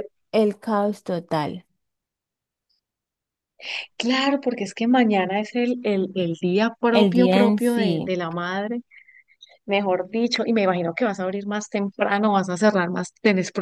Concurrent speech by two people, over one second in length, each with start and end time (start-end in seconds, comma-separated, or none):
6.9-8.2